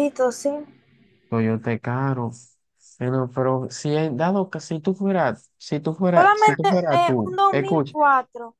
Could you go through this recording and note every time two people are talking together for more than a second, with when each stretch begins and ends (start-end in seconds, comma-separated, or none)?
6.1-7.9